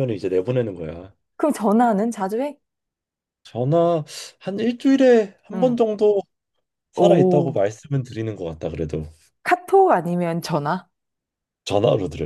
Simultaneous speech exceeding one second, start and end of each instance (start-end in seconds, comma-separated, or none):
none